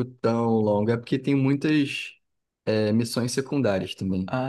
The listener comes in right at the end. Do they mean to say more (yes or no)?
yes